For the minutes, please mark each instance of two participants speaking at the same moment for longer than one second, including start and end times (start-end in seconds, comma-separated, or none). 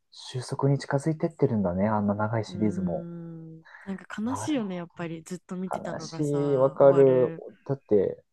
5.7-7.4